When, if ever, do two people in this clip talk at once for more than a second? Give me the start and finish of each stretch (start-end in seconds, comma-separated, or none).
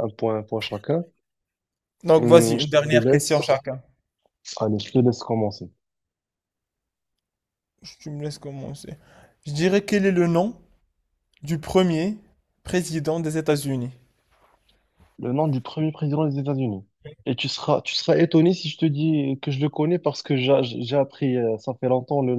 2.1-3.6